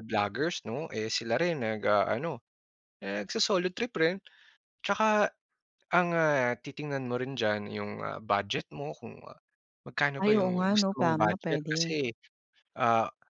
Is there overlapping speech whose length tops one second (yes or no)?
yes